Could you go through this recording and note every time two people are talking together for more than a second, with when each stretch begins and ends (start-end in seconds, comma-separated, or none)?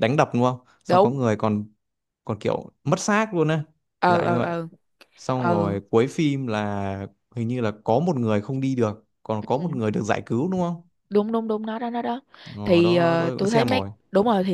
12.6-13.9